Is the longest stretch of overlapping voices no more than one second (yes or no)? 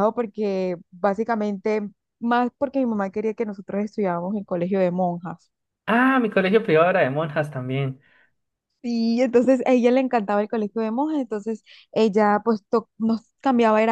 yes